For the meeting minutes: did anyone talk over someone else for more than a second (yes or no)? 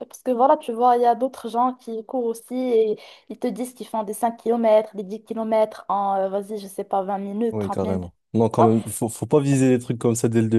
no